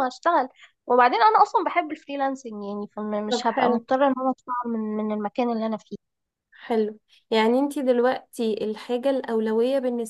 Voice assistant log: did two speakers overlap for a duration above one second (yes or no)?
no